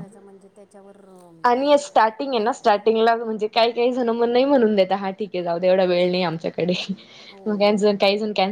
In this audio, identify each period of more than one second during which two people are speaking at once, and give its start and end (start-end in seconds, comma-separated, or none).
none